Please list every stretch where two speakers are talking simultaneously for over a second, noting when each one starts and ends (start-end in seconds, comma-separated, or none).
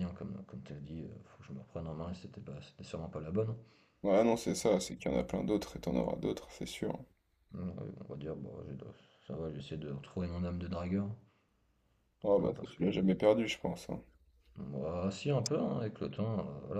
none